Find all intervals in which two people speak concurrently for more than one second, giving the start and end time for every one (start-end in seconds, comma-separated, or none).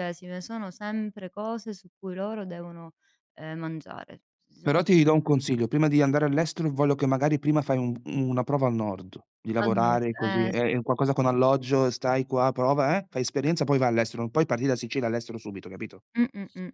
9.6-11.1